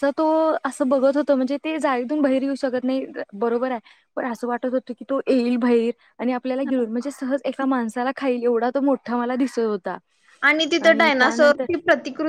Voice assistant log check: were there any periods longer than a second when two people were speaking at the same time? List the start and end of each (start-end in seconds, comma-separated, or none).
none